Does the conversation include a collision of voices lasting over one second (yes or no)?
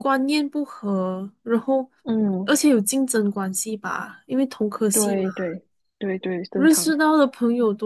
no